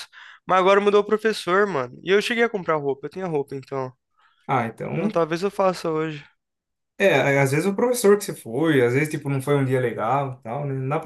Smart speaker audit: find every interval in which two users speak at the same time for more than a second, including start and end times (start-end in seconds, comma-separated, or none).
none